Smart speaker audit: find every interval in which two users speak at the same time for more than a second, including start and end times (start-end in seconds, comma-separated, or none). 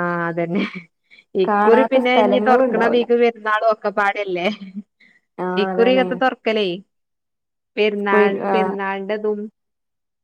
1.5-3.0